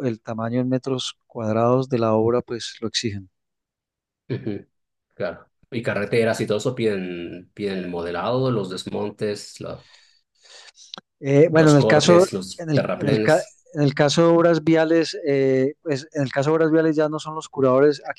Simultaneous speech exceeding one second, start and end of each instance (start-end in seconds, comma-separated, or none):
11.6-13.6